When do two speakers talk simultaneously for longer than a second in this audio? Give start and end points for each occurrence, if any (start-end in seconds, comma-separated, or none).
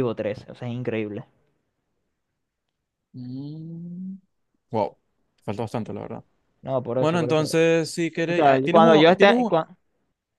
8.3-9.5